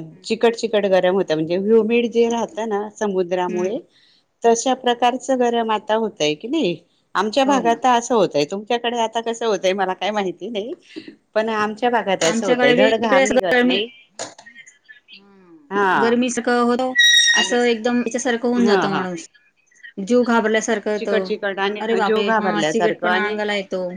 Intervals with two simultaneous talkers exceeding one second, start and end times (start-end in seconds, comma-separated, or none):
21.9-23.4